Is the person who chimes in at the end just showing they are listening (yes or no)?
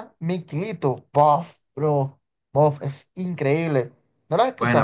no